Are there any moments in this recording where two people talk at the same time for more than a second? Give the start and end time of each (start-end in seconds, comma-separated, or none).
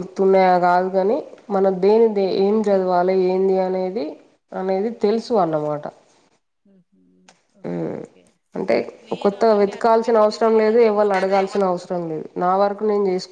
9.2-11.1